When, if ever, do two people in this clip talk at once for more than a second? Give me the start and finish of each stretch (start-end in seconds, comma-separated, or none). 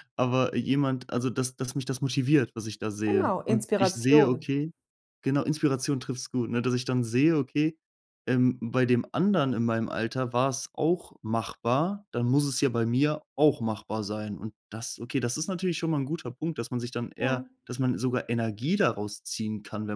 3.1-4.5